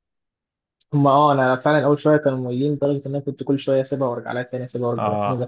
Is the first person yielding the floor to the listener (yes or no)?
no